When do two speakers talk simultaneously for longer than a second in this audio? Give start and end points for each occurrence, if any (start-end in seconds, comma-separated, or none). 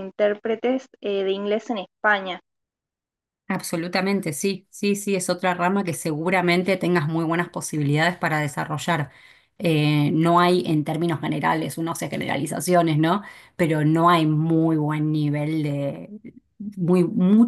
none